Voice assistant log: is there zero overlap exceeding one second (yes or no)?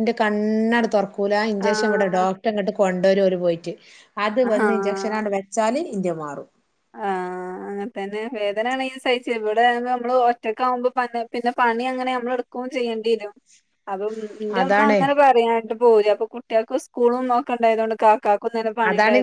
yes